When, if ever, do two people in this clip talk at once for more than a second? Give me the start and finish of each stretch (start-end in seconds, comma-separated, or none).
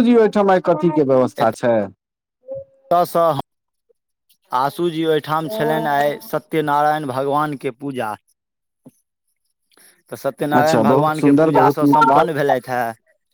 10.6-12.3